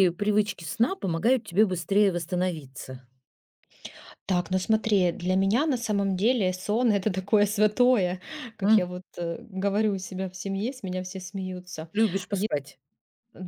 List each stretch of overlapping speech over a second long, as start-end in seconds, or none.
none